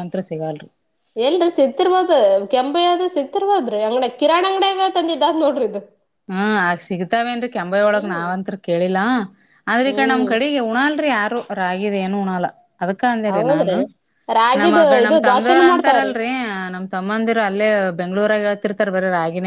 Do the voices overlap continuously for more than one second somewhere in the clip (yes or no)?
yes